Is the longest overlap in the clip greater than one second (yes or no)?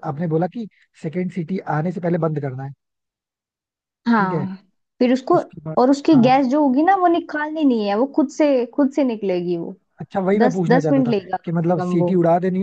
yes